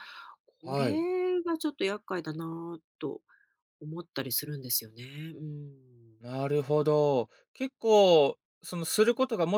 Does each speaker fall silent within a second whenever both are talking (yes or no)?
yes